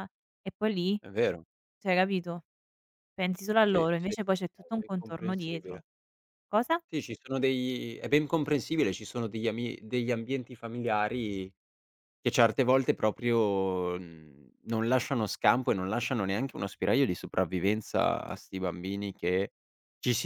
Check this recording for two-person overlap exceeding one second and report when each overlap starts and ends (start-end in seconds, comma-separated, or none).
3.6-5.8